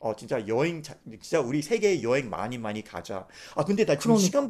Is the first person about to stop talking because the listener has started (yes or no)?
no